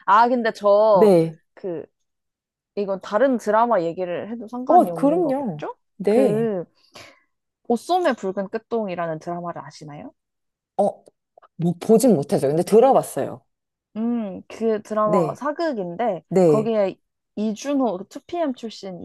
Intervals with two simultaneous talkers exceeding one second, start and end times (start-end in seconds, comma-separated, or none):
4.7-6.5